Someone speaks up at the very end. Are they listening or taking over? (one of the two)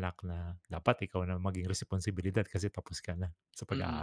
taking over